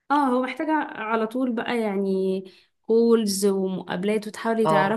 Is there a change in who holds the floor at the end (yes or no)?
no